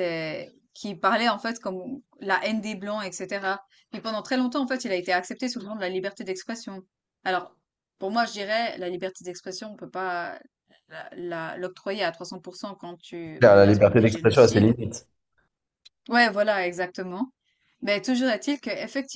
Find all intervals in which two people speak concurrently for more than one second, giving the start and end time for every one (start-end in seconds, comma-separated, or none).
13.4-14.8